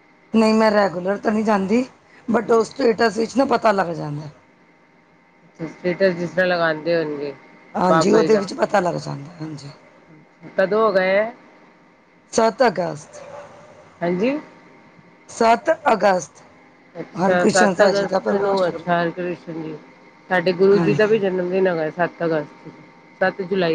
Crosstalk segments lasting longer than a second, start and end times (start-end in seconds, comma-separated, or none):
17.2-18.9